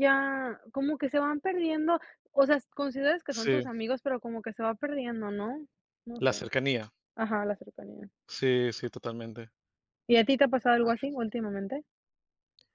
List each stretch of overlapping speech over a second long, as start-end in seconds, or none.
none